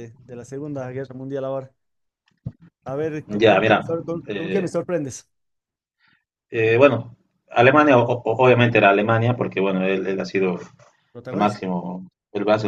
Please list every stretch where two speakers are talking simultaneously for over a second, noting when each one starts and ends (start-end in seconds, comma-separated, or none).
3.3-4.7